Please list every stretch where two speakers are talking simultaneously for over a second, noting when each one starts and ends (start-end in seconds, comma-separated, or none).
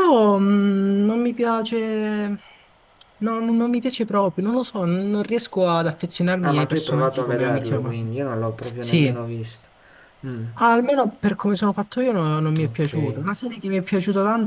6.5-8.1